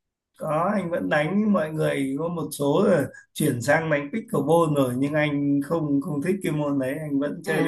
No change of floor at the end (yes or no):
no